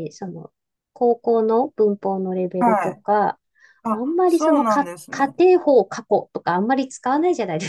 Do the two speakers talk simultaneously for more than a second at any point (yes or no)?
yes